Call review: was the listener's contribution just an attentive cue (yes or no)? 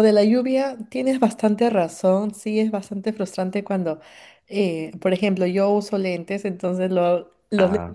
yes